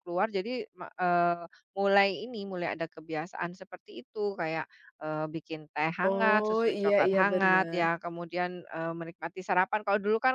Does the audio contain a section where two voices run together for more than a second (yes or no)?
yes